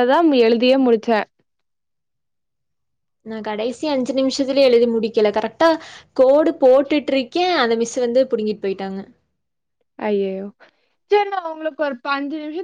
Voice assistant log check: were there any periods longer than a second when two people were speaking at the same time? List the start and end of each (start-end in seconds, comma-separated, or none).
none